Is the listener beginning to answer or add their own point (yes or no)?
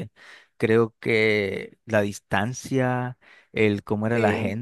no